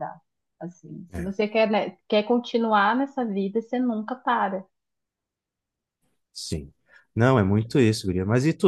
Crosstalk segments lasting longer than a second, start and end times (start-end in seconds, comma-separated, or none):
none